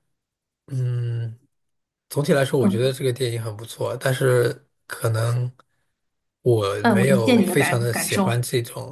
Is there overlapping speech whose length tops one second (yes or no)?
yes